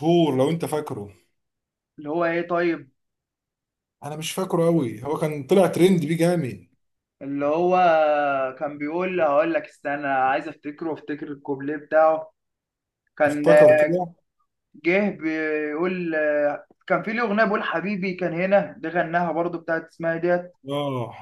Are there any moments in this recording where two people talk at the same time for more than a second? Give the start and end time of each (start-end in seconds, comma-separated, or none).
none